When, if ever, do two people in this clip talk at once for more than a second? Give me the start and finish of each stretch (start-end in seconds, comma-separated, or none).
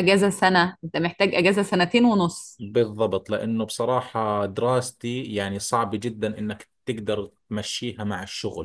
none